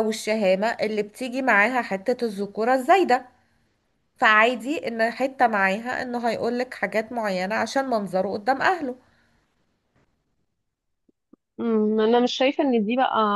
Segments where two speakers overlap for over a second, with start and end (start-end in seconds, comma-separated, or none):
none